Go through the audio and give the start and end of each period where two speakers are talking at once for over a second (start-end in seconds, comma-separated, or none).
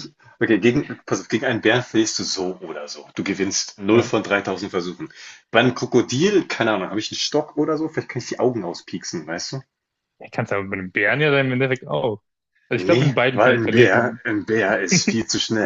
12.7-14.2